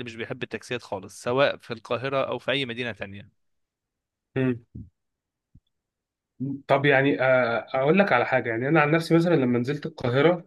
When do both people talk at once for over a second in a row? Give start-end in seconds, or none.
none